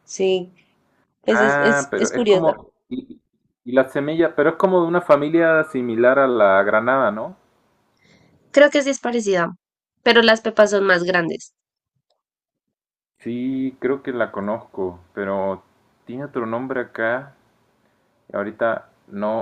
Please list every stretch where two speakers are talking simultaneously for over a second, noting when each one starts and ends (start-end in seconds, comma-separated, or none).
1.3-2.6